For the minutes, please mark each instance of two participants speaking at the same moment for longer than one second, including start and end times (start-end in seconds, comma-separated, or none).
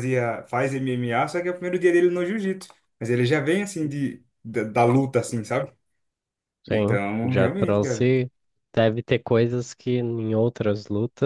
6.7-8.1